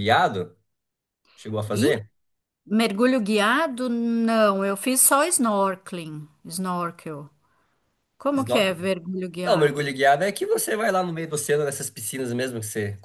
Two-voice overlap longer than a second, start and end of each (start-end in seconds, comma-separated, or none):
none